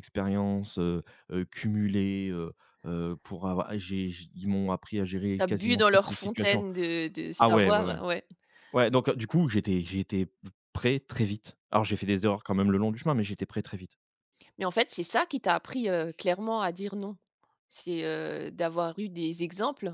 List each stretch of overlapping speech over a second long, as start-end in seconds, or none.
5.4-6.6